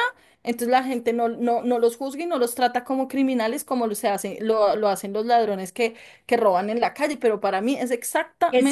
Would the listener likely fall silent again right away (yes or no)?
no